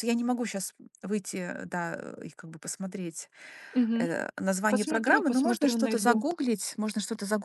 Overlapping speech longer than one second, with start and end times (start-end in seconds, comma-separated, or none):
4.7-6.2